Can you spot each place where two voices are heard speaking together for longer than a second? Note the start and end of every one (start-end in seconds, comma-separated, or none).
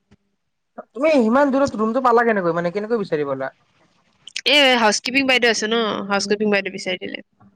none